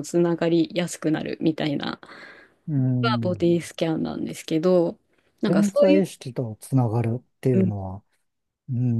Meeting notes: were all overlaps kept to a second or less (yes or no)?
yes